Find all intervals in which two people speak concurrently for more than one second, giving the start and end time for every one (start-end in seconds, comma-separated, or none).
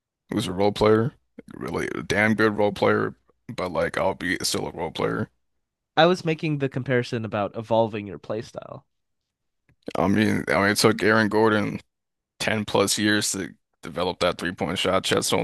none